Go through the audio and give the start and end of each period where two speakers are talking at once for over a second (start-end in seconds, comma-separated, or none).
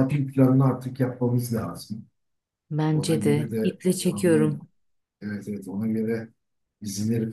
2.9-4.4